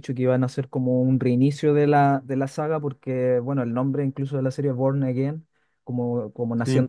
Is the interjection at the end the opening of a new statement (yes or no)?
no